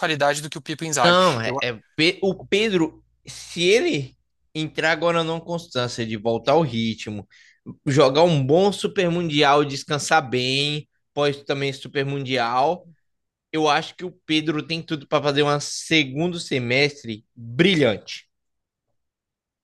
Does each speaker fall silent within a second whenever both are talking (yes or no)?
yes